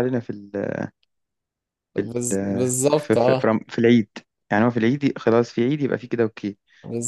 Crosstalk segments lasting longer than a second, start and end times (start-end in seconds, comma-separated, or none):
2.1-3.5